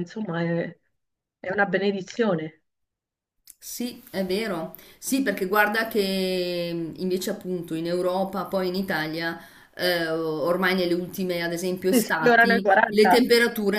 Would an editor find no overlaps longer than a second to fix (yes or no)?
no